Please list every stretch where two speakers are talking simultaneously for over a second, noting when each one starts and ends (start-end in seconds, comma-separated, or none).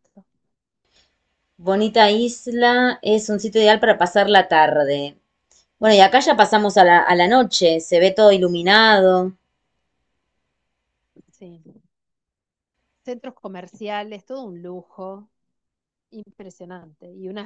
none